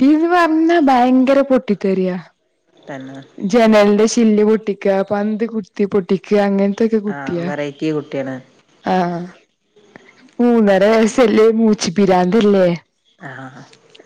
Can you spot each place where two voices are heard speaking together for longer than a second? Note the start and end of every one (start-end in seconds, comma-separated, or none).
none